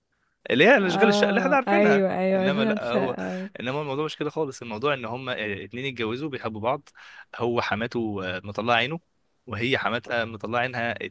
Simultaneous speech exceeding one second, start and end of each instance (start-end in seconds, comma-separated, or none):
0.8-3.2